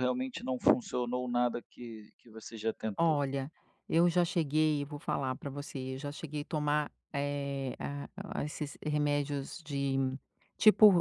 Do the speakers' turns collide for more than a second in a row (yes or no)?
no